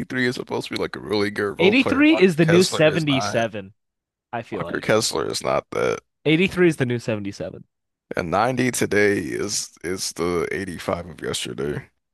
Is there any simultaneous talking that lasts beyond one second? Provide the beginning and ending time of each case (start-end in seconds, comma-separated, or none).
1.6-3.5